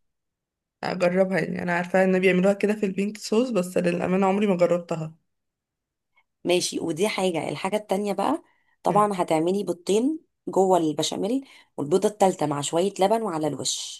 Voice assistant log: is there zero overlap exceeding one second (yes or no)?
yes